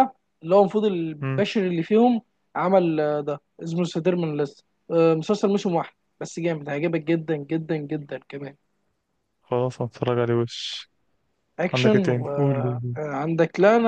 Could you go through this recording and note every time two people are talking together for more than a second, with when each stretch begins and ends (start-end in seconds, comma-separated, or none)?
11.7-12.9